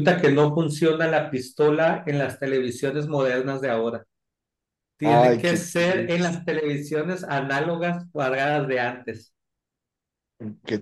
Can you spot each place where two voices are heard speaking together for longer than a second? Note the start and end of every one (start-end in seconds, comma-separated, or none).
5.0-6.4